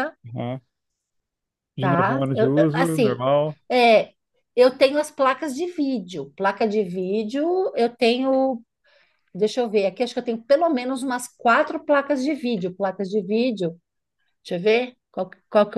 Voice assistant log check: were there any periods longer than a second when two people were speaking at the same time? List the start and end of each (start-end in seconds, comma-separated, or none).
1.8-3.2